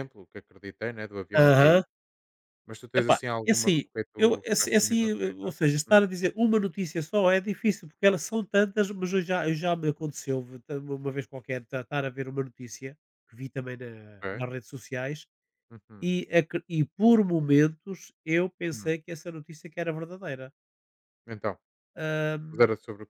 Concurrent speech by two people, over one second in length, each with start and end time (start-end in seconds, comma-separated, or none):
3.0-5.9